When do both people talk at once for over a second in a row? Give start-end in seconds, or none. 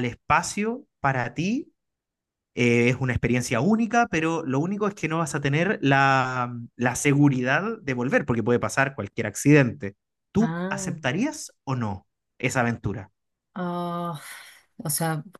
none